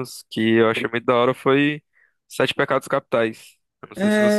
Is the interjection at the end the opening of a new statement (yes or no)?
yes